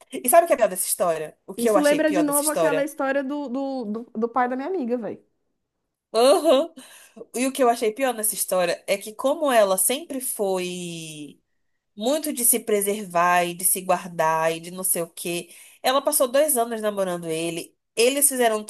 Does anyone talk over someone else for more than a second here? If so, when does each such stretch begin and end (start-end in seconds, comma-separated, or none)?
1.6-2.9